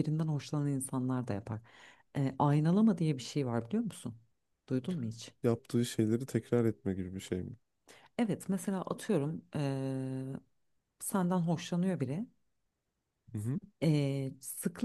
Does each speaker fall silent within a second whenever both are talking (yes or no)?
yes